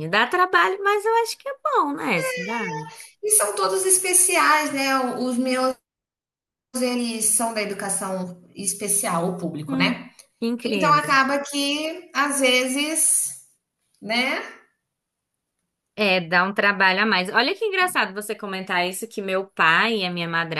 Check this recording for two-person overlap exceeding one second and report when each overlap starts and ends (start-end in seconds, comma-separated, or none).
none